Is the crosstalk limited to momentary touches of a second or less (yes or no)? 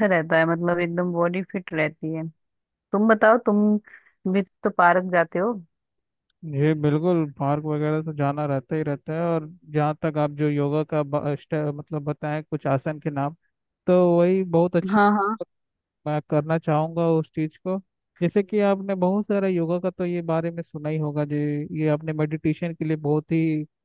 yes